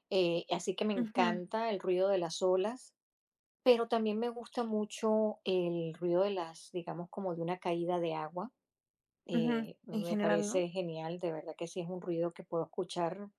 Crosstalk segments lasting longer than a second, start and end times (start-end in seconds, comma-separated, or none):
9.3-10.7